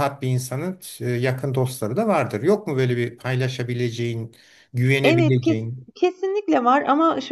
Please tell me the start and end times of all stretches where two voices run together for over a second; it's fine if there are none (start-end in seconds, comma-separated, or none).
none